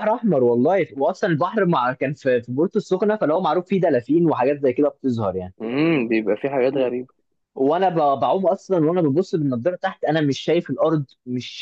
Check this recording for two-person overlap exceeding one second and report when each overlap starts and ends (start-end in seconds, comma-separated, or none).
none